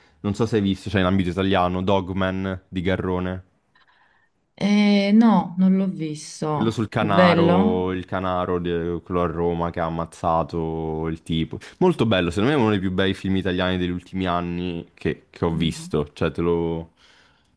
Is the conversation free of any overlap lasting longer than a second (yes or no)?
no